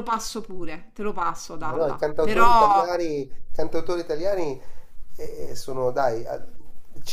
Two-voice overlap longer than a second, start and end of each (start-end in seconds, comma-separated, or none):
1.6-2.9